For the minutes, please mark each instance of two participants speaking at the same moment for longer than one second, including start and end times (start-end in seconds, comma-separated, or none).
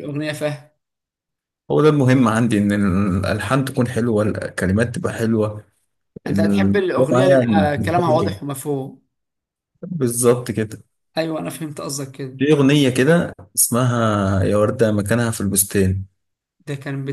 6.3-7.7